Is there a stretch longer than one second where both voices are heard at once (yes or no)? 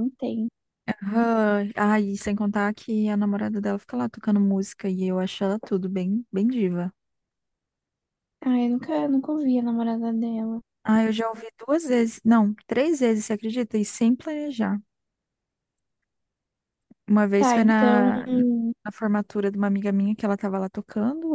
yes